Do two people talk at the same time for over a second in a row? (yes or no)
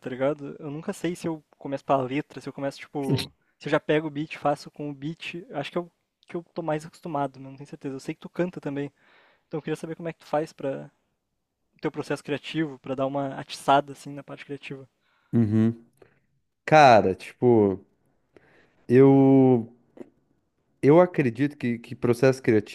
no